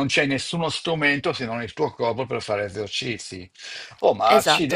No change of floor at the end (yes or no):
yes